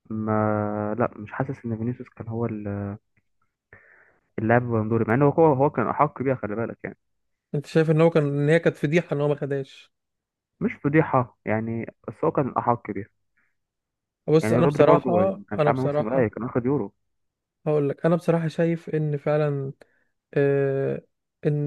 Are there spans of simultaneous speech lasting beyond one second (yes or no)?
yes